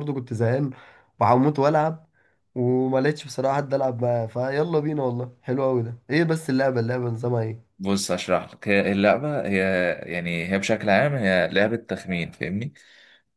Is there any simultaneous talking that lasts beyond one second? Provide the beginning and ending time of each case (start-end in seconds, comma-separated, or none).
none